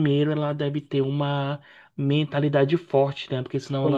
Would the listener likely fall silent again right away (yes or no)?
yes